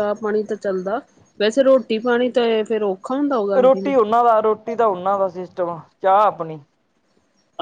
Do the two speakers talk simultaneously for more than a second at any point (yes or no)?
no